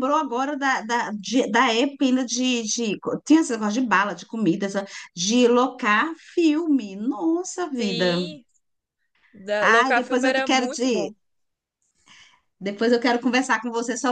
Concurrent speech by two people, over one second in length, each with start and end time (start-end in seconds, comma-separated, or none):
9.6-11.1